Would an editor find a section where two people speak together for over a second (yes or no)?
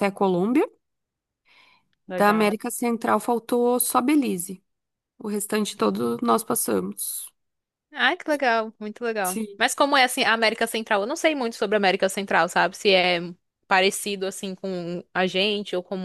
no